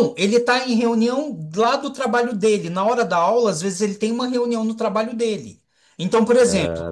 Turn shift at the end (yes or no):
no